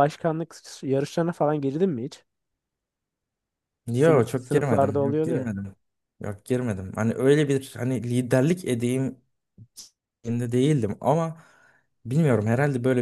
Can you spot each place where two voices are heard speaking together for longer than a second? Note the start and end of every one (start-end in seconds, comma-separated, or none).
4.0-5.5